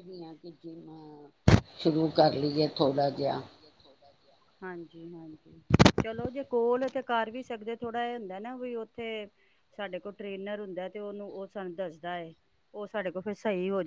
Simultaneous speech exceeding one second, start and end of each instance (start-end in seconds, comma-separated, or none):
none